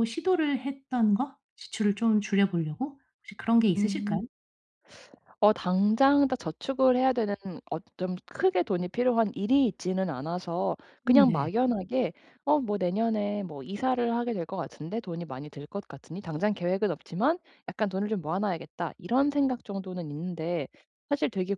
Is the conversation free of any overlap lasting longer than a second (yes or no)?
yes